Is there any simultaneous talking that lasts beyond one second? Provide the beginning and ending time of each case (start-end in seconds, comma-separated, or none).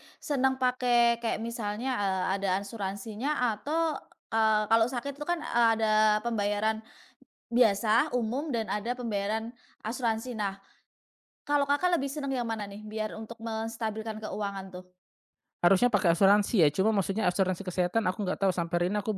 none